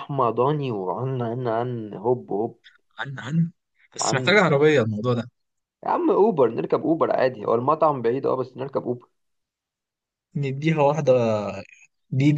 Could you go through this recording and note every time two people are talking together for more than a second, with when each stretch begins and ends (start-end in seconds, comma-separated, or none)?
none